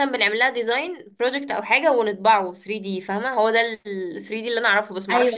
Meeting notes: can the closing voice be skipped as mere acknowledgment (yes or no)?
no